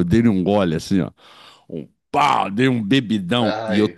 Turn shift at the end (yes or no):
no